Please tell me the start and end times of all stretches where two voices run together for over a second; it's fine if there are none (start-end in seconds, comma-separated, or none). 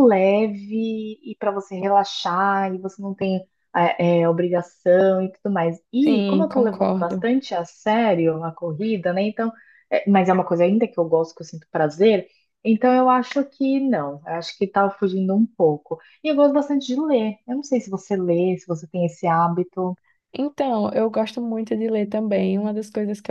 6.0-7.3